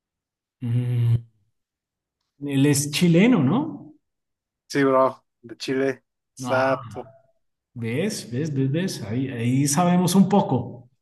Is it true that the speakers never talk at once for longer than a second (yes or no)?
yes